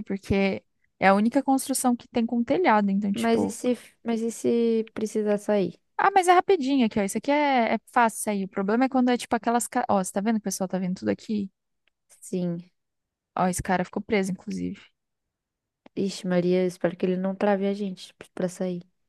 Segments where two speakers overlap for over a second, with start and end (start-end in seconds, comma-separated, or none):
none